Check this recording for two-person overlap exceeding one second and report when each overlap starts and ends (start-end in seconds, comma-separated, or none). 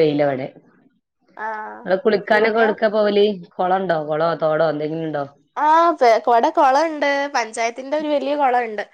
none